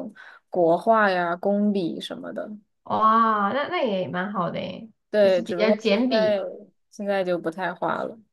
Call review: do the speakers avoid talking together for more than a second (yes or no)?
no